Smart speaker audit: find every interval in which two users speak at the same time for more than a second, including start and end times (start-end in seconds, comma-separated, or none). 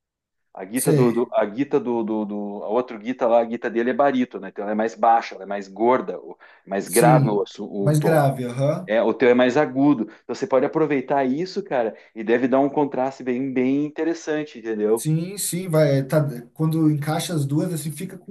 6.8-8.3